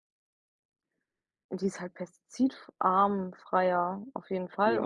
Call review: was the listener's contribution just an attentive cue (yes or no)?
no